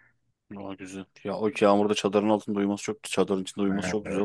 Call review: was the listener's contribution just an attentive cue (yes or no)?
no